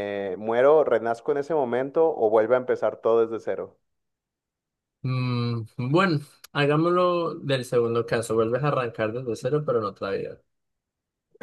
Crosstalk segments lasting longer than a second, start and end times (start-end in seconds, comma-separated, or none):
none